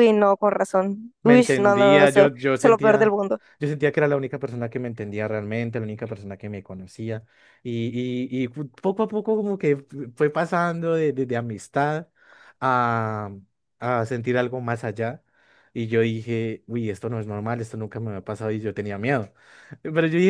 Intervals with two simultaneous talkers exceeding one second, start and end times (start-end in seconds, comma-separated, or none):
1.2-3.1